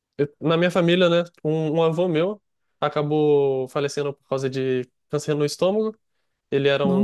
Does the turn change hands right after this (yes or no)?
no